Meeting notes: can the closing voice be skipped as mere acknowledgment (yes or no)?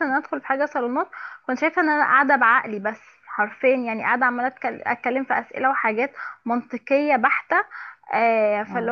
yes